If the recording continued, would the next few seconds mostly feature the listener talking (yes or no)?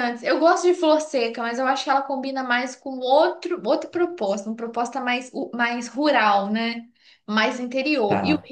no